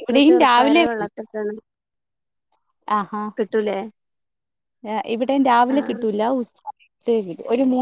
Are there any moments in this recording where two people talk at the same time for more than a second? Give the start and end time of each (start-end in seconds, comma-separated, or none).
none